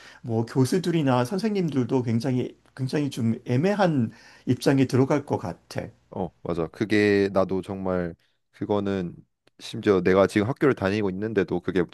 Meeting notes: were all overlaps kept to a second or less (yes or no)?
yes